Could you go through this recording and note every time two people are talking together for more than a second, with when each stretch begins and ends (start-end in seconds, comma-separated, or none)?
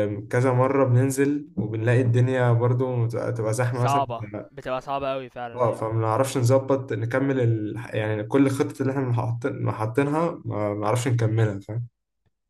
none